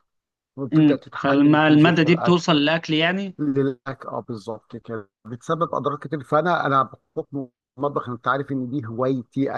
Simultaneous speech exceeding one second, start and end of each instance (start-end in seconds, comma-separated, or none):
0.7-2.5